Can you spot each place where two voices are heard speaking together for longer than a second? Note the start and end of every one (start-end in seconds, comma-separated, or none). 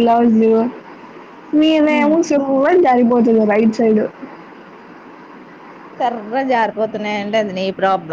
none